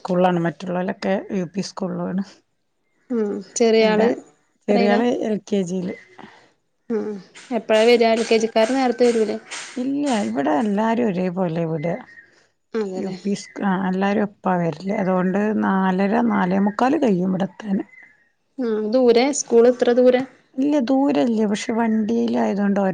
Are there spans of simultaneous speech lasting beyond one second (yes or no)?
no